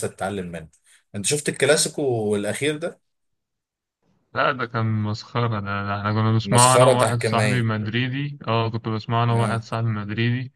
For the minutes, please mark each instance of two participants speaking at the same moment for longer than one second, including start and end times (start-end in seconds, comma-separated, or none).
6.4-7.7